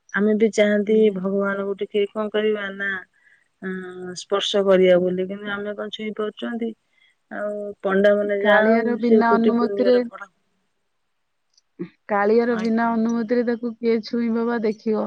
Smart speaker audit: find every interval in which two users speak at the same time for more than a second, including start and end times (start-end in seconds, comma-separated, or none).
8.4-9.9